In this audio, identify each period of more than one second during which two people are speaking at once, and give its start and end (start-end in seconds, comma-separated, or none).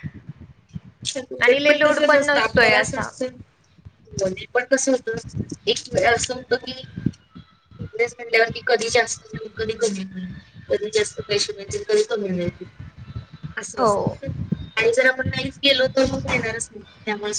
1.4-3.1